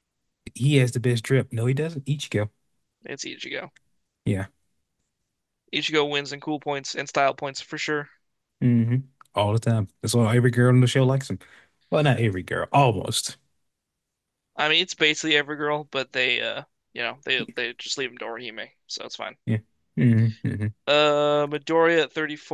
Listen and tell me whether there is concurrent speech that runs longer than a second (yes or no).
no